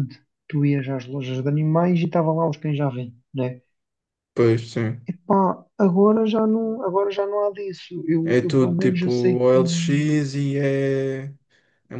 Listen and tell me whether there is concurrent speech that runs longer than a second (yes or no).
yes